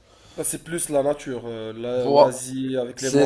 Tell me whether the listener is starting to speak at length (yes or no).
yes